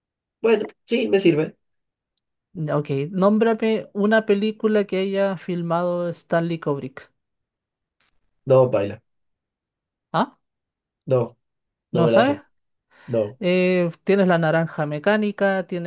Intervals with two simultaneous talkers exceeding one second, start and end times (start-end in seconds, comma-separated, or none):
none